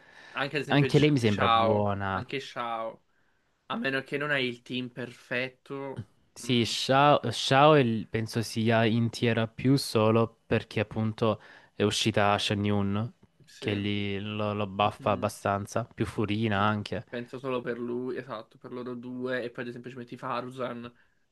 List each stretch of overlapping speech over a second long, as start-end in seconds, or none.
0.7-2.2